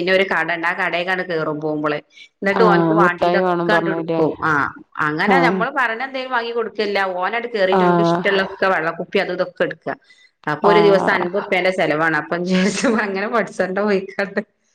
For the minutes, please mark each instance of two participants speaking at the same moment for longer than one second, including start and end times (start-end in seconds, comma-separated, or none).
2.6-4.2